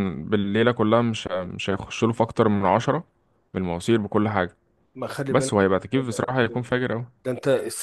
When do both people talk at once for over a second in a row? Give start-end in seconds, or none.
5.3-6.7